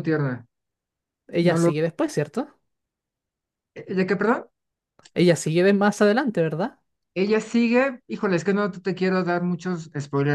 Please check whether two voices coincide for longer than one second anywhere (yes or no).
no